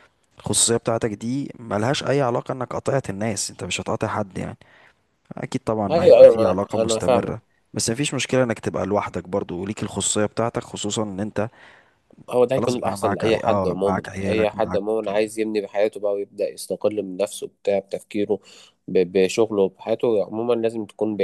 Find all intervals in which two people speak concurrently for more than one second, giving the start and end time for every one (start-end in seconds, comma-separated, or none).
5.9-7.3, 12.5-14.8